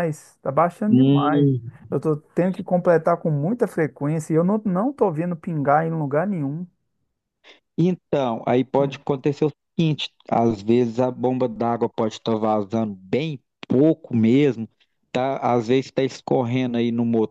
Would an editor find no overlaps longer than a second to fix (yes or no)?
yes